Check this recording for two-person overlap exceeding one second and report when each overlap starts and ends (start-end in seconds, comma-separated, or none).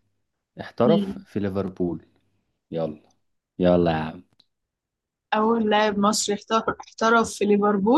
none